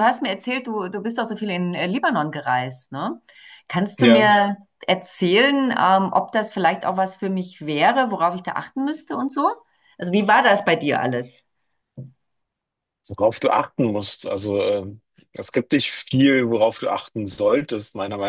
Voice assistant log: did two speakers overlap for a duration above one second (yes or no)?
no